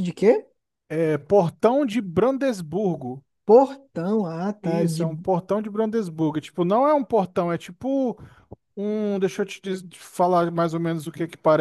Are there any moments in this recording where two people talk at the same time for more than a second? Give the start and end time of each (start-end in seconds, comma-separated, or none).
none